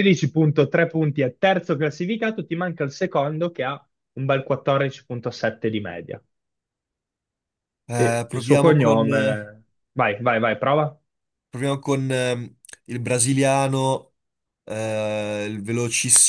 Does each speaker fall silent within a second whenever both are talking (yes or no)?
no